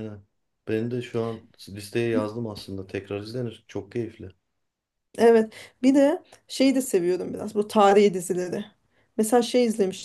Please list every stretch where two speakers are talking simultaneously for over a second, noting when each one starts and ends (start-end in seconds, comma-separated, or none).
none